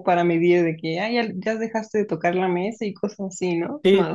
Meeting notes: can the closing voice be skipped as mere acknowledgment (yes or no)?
no